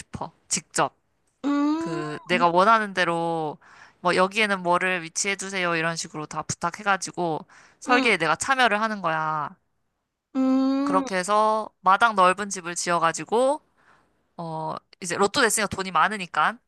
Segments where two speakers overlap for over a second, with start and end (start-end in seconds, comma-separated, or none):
none